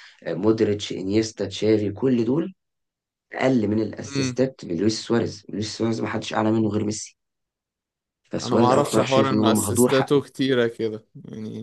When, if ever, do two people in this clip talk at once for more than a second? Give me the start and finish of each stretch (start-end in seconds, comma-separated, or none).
8.4-10.2